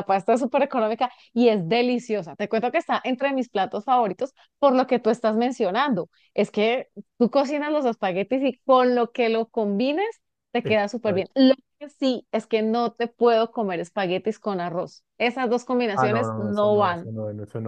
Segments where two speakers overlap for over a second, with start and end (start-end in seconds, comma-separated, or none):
15.9-17.1